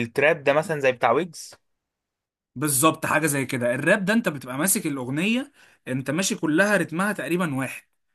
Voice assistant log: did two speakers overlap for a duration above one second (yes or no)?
no